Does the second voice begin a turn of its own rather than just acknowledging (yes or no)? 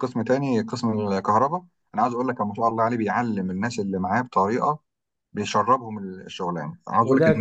yes